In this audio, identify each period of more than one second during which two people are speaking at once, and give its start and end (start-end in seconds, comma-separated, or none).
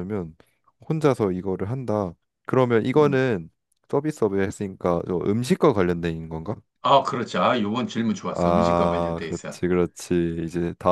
8.3-9.6